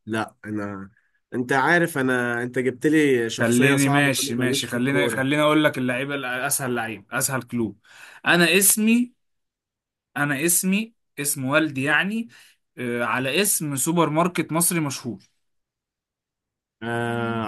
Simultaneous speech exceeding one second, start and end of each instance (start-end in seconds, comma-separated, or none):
3.4-5.2